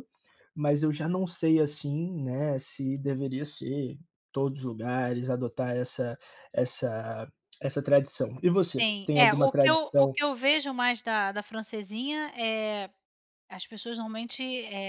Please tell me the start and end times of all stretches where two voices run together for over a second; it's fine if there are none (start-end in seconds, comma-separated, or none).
8.5-10.1